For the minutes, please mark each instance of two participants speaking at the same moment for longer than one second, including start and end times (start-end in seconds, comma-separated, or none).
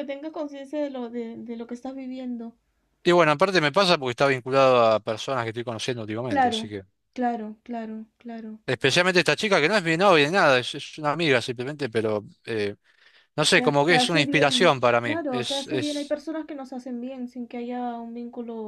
13.5-16.1